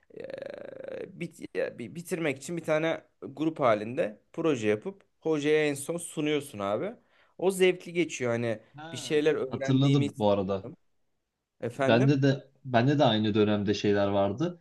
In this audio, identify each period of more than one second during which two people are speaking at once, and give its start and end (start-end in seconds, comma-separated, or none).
8.8-10.2